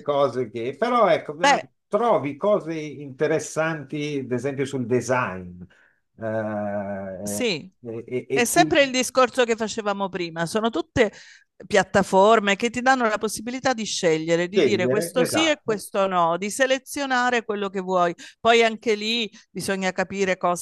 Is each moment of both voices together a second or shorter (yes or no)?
no